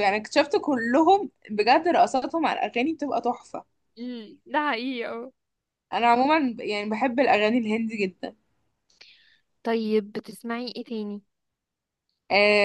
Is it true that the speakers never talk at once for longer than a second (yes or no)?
yes